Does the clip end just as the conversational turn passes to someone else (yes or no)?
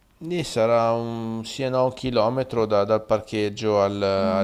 yes